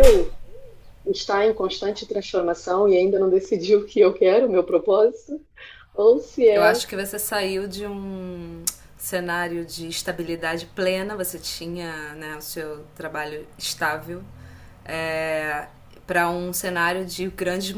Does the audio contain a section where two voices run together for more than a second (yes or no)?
no